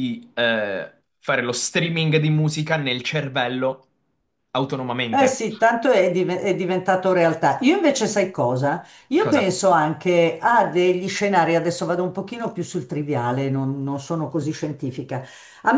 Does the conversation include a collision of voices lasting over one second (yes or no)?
no